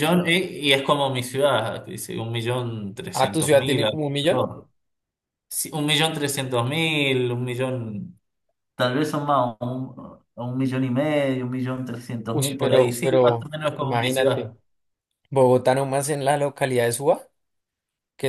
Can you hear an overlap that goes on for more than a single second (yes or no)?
yes